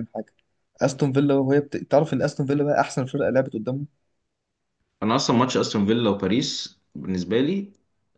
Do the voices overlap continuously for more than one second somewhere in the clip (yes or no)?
no